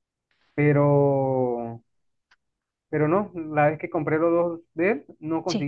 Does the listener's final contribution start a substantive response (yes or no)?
no